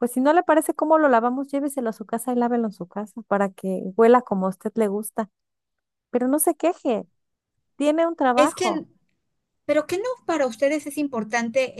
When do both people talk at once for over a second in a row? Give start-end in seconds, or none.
none